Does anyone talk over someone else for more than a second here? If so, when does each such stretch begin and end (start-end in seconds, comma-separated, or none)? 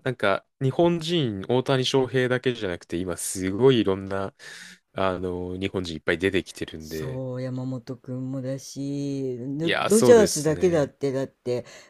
9.6-10.9